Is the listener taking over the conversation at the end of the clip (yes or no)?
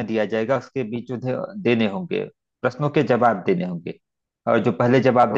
no